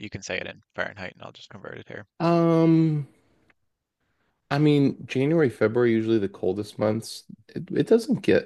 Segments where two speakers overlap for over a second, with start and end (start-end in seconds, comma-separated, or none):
none